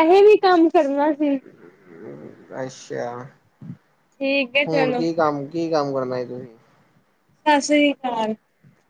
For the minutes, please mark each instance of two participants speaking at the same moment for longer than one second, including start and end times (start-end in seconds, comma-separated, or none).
none